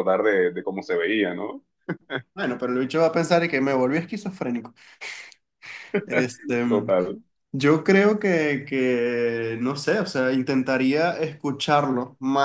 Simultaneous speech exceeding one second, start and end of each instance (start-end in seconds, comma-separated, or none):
none